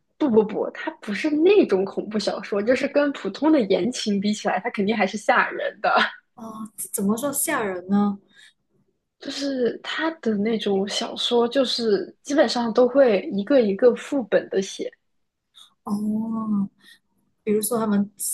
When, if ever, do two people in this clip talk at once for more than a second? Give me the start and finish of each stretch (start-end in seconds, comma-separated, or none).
none